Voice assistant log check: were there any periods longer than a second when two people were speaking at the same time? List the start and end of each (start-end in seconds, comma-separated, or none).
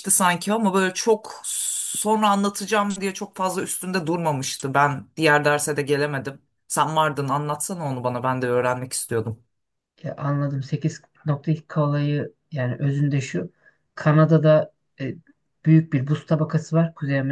none